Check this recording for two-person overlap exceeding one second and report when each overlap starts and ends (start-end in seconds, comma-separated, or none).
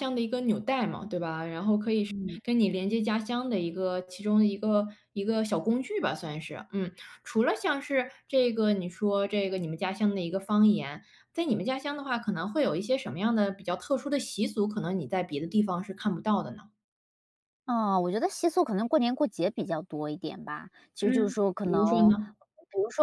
21.0-22.4